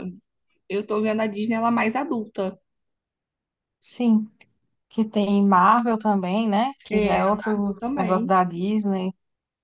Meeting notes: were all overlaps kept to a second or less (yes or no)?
no